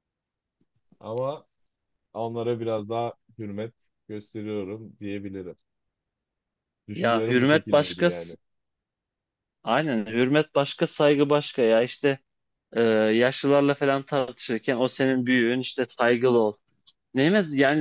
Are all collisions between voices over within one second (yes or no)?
no